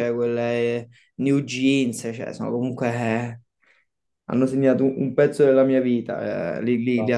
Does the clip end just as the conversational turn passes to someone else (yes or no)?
no